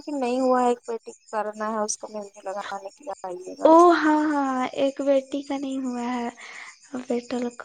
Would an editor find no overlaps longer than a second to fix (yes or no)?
yes